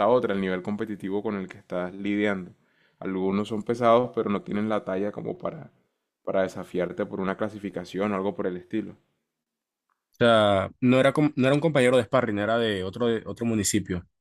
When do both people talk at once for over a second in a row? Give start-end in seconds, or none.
none